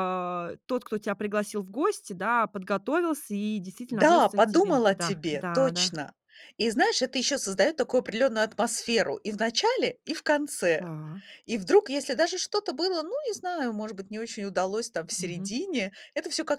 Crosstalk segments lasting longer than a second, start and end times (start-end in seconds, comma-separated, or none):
4.0-5.9